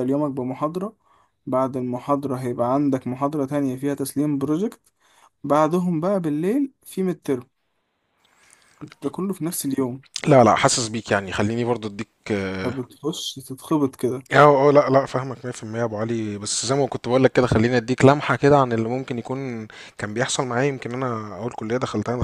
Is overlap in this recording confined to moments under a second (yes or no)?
yes